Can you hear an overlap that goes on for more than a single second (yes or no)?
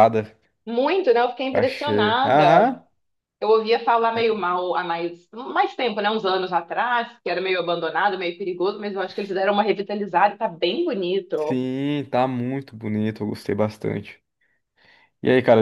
yes